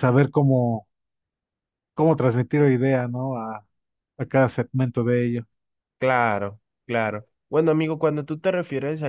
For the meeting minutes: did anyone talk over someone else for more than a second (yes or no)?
no